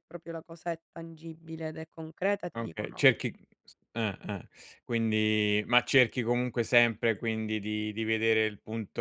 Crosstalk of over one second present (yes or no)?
no